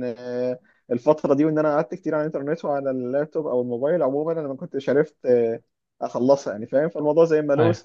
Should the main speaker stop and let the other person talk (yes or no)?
no